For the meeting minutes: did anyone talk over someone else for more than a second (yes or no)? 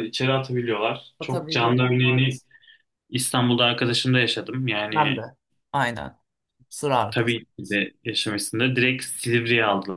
yes